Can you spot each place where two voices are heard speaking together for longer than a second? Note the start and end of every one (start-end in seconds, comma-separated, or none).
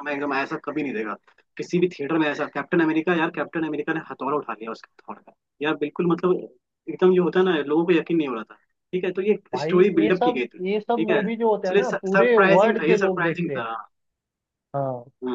9.5-13.7